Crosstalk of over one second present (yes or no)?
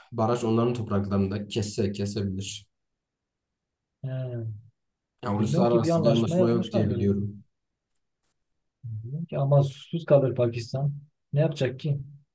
yes